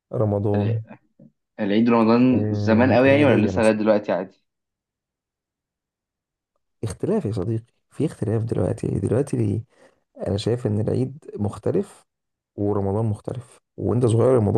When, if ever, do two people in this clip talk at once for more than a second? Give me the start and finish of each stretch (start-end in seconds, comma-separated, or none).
2.3-3.7